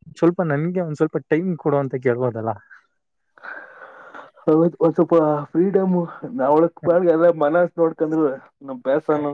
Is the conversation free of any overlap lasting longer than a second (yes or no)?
yes